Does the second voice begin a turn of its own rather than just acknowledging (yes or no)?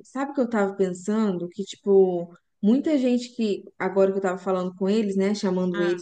no